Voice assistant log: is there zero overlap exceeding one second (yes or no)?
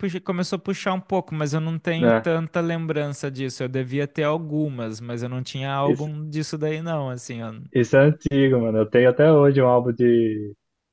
yes